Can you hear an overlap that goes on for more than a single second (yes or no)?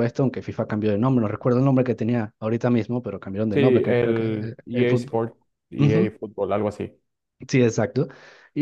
yes